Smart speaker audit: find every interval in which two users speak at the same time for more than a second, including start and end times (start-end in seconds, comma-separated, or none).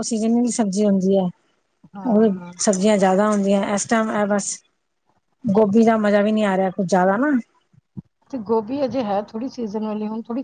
none